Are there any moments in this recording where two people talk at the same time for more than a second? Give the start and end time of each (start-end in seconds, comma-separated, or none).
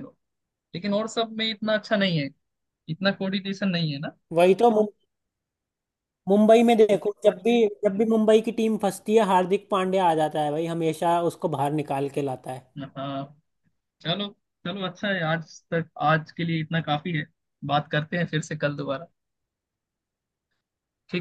none